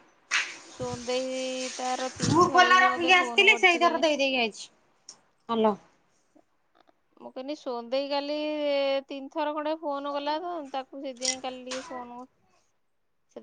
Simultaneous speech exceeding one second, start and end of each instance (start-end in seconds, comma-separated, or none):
2.3-4.0